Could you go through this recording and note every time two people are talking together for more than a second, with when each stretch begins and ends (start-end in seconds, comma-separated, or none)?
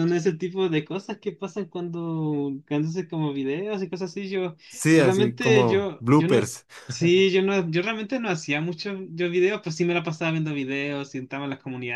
4.9-6.5